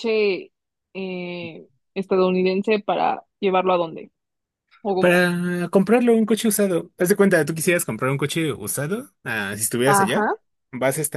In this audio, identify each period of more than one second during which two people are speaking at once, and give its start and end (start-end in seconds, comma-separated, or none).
none